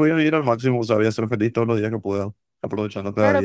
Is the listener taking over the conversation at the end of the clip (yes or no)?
yes